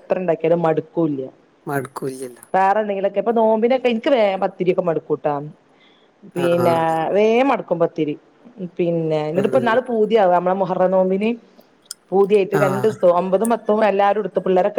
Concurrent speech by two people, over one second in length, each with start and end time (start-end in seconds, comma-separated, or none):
none